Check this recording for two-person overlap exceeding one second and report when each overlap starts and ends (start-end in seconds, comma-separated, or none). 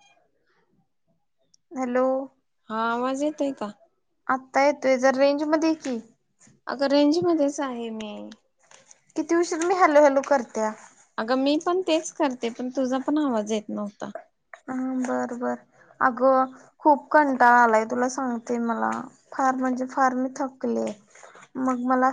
none